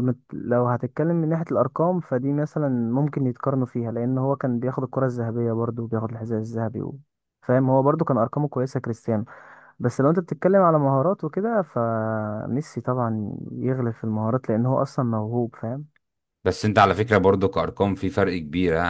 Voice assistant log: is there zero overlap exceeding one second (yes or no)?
yes